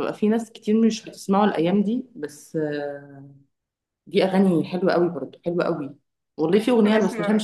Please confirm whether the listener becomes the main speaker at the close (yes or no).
no